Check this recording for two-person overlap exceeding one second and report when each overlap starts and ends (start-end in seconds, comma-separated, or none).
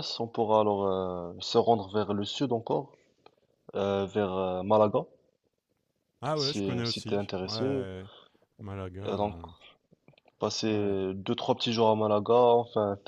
6.3-7.9